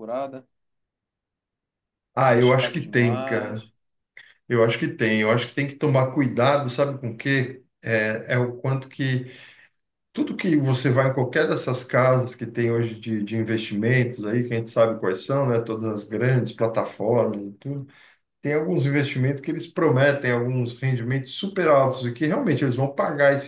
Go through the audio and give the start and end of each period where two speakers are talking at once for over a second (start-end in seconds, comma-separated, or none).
2.2-3.6